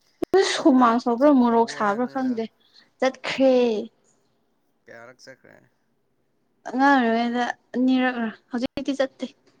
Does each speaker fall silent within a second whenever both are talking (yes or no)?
no